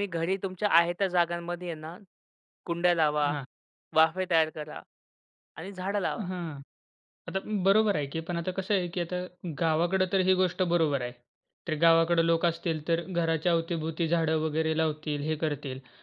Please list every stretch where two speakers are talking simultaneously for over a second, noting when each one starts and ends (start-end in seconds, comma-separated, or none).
none